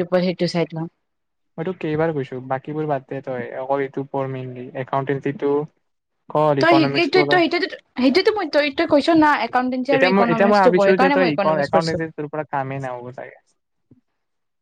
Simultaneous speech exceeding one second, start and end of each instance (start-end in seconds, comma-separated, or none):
9.9-12.0